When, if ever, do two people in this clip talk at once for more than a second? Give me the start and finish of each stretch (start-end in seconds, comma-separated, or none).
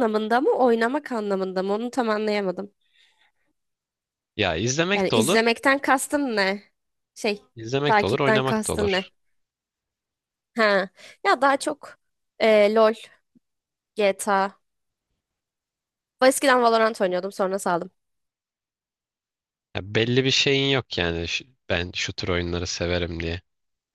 7.9-9.1